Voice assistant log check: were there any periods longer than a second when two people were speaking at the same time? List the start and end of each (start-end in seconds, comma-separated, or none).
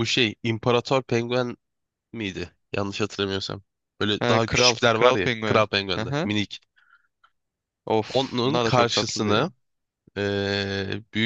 4.2-6.3, 8.1-9.4